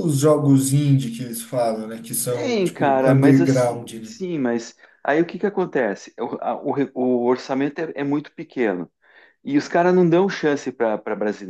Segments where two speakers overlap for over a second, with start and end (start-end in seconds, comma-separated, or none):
2.3-4.2